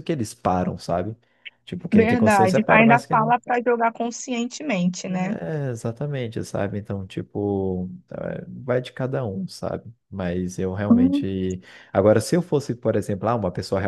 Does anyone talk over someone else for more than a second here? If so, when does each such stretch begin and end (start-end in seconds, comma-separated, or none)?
1.9-3.3